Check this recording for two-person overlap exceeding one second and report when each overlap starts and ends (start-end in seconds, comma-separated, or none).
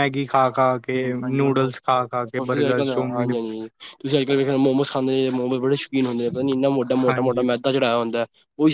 1.2-3.4